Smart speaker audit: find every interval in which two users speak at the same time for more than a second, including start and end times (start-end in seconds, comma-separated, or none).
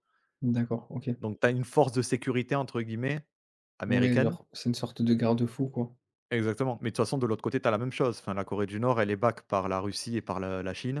none